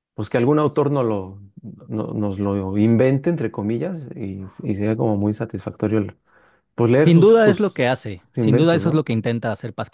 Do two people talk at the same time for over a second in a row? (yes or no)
yes